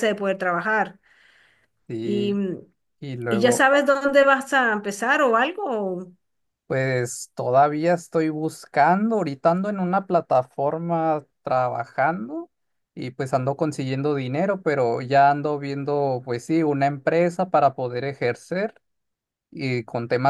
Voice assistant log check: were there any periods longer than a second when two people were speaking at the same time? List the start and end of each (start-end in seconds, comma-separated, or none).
none